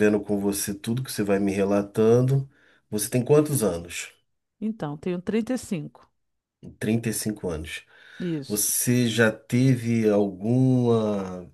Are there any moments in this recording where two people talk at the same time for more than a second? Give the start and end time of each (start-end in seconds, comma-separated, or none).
none